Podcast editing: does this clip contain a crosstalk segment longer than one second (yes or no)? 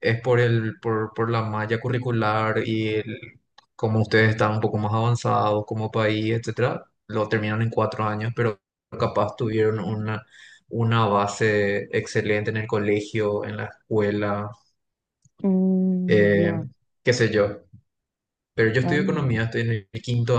no